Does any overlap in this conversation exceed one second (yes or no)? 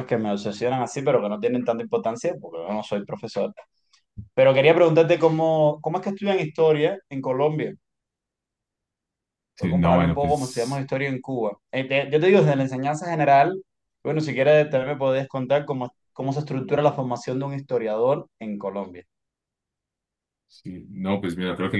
yes